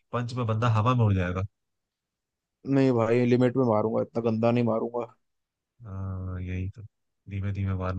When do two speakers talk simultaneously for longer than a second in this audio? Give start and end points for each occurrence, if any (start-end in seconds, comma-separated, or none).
none